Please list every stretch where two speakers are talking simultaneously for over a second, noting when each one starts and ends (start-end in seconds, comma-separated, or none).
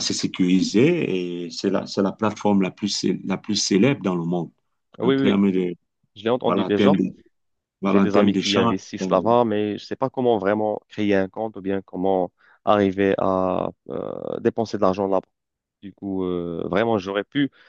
7.8-9.4